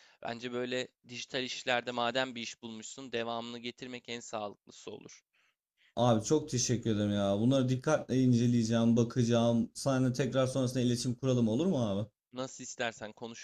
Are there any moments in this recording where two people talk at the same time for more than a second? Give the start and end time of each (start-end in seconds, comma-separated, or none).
none